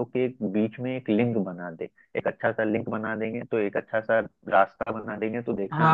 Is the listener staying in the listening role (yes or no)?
no